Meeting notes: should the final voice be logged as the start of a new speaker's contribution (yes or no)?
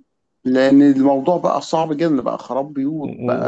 yes